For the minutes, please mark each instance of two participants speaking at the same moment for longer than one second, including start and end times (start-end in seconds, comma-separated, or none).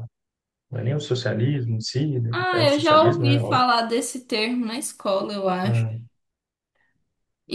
2.3-3.6